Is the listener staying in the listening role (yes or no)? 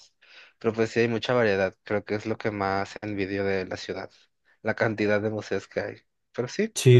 no